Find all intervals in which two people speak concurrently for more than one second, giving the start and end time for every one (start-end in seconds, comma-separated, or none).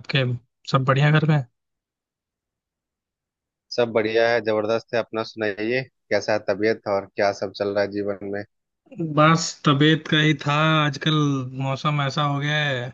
none